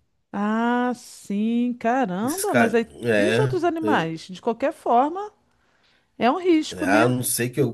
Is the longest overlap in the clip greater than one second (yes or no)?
yes